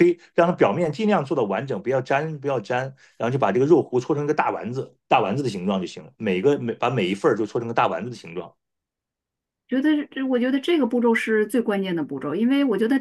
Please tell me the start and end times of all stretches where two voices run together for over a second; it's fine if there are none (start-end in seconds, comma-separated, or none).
none